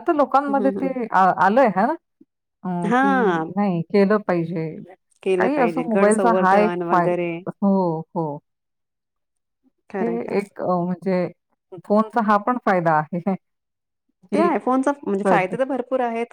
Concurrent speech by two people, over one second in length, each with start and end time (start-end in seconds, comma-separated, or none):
5.4-7.3